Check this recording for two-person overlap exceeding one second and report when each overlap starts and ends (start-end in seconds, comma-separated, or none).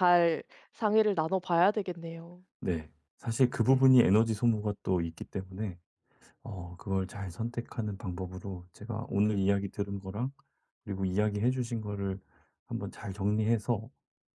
none